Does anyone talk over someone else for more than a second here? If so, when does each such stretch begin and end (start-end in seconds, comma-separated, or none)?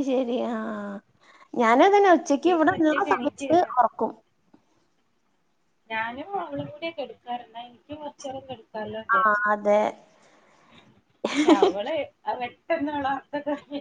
2.2-3.7